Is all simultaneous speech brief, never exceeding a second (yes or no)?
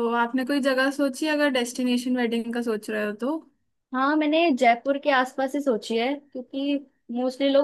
yes